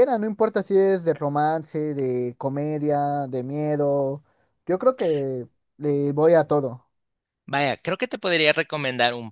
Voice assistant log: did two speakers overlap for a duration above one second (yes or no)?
no